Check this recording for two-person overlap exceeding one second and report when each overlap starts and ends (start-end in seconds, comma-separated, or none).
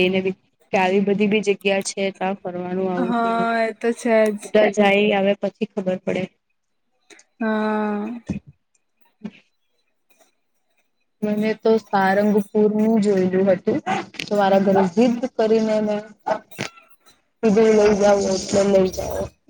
none